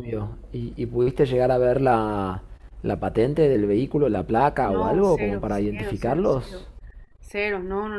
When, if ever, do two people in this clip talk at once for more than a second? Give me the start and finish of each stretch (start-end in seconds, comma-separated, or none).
4.6-6.7